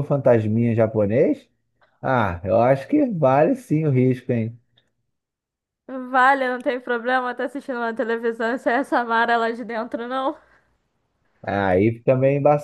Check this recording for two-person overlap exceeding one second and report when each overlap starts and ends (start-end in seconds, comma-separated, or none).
none